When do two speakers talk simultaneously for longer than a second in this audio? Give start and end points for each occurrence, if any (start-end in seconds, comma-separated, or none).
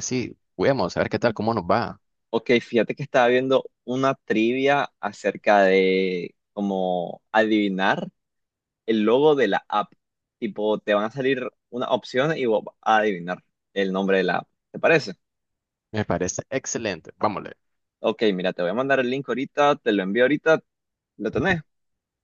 none